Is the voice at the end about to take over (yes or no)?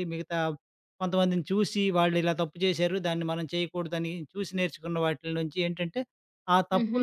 no